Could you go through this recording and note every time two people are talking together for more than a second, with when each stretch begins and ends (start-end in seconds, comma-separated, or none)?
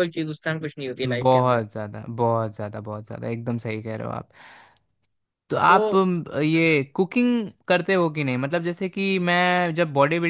none